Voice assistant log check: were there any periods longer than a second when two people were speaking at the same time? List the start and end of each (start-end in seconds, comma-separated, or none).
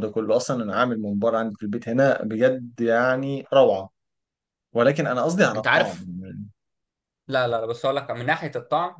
none